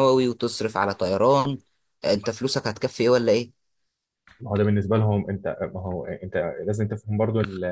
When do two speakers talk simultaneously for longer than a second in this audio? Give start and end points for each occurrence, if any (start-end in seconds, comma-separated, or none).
none